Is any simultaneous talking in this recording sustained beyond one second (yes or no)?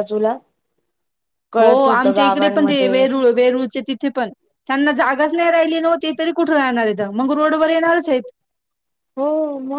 yes